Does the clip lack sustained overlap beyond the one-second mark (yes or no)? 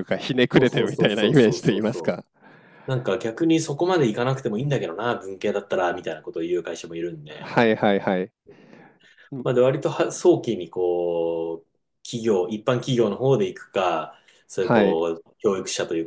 no